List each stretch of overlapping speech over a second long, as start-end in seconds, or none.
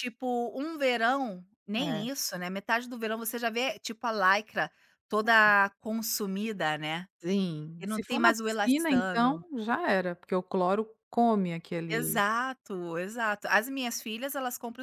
7.8-9.4